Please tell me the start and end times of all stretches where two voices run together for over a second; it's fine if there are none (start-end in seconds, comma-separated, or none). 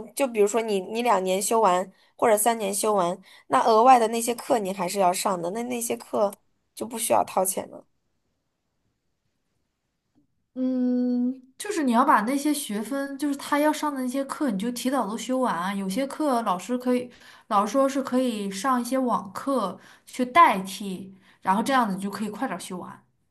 none